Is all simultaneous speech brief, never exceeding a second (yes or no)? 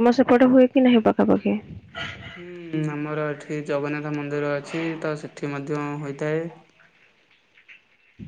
yes